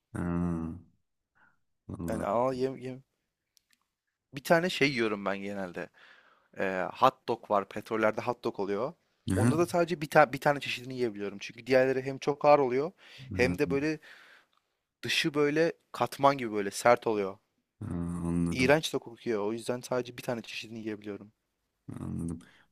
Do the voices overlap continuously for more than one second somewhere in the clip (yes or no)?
no